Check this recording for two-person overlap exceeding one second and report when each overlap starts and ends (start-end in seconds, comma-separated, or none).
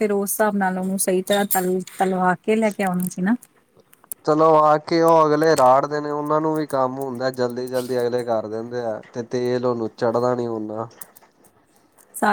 none